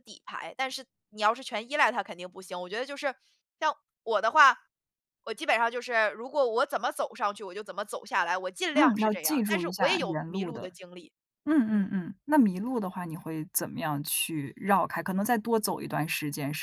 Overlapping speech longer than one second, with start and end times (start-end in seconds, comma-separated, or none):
8.7-10.7